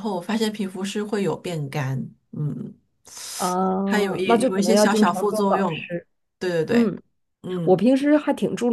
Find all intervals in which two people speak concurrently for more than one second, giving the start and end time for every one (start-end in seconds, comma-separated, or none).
3.8-5.9